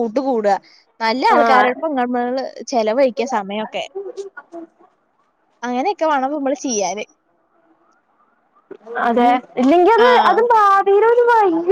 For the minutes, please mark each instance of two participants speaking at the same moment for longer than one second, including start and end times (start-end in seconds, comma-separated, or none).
none